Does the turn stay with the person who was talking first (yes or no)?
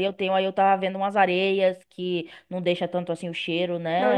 no